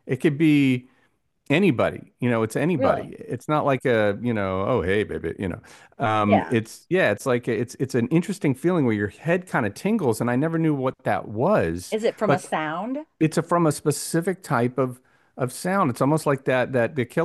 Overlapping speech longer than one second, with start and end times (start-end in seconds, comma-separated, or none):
none